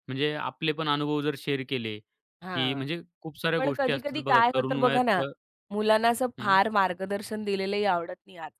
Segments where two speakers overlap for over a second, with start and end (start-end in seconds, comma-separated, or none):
3.6-5.2